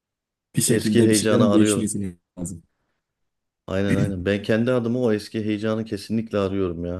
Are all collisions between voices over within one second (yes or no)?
no